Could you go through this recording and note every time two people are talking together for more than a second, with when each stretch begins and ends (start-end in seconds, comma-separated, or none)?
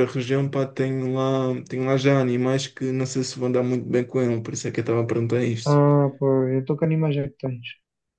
none